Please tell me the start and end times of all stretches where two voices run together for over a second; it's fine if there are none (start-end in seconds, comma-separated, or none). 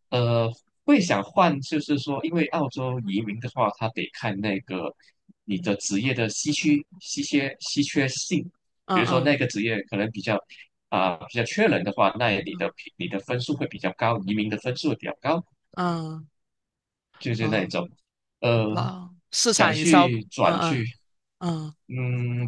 19.4-20.9